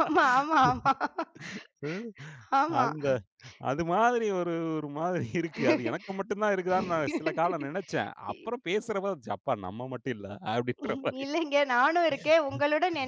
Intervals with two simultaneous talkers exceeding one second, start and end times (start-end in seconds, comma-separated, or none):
none